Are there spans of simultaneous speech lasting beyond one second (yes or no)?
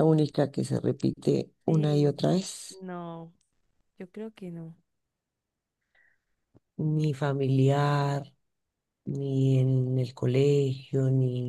no